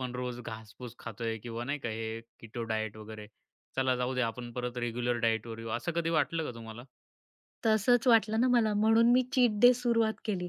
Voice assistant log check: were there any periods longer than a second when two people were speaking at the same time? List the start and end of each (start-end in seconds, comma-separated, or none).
none